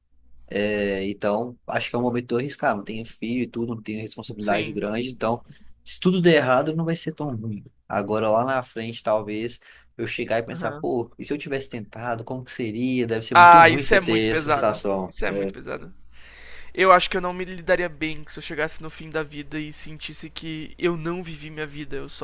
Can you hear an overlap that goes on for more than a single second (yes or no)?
yes